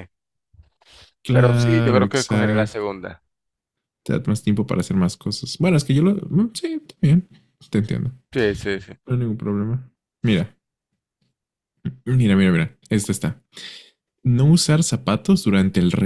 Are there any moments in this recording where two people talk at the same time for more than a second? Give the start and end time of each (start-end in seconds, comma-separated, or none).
1.3-2.9